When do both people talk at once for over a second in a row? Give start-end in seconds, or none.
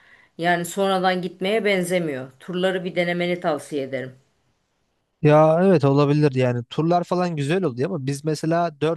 none